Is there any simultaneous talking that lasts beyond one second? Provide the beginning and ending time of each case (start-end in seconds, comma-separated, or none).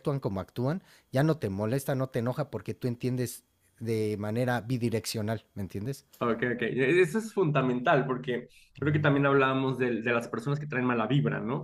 none